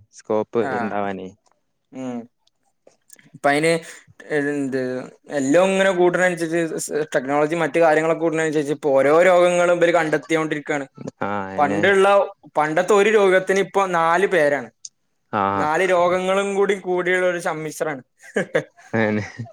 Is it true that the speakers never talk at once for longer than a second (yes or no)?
yes